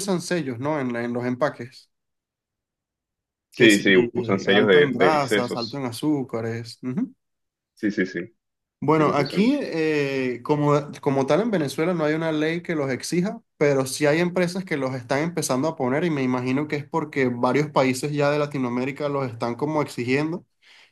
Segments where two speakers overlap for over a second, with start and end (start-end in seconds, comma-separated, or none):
4.5-5.8